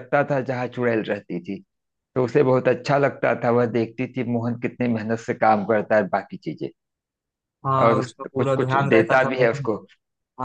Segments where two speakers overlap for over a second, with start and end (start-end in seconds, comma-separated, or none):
7.8-9.7